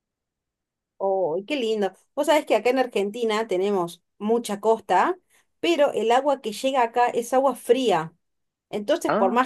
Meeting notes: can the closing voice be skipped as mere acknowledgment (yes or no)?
yes